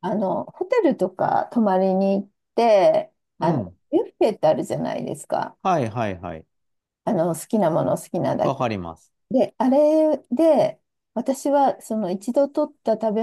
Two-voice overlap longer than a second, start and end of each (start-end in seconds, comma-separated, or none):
none